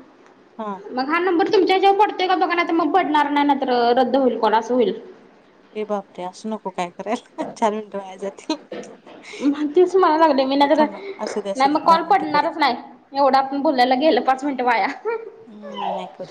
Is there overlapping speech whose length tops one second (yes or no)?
yes